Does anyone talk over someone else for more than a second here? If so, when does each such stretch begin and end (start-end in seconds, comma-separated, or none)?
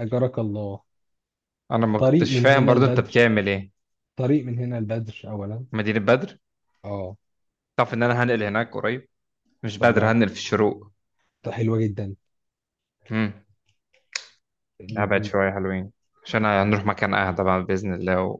2.0-3.3